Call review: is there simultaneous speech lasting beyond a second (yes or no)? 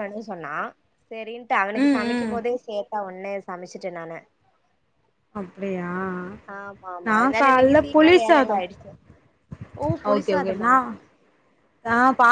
yes